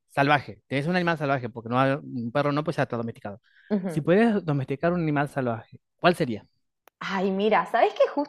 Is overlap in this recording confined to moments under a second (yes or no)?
yes